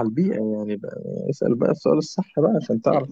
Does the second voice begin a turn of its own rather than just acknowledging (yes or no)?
yes